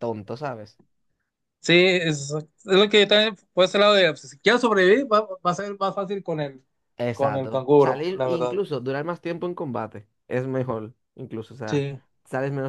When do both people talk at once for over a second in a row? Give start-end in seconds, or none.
7.1-8.6